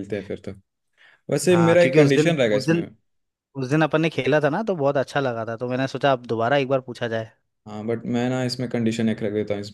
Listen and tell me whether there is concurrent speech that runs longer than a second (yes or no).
yes